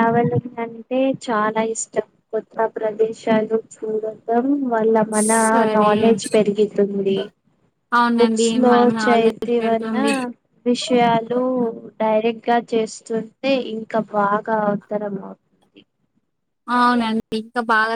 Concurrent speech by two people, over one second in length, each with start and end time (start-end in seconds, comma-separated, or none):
8.2-10.0